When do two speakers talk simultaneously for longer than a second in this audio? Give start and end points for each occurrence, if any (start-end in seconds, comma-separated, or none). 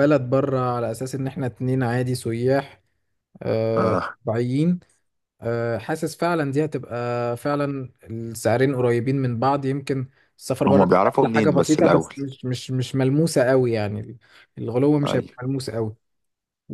10.7-12.2